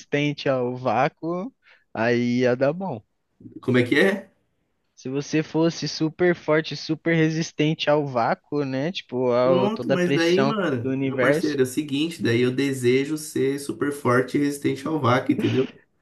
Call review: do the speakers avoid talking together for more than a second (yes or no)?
no